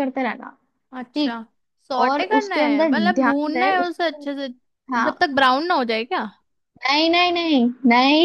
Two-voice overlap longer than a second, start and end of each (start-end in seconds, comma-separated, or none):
2.0-4.2